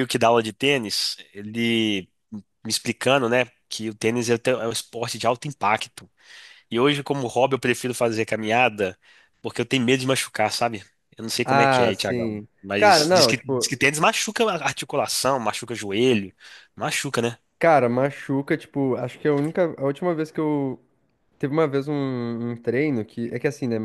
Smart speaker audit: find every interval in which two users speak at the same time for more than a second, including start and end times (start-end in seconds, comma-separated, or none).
11.4-13.7